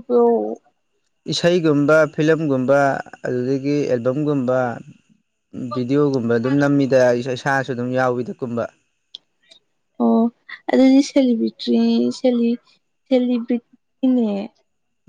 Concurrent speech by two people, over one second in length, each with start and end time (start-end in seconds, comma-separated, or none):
none